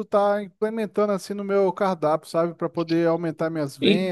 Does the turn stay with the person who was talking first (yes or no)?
no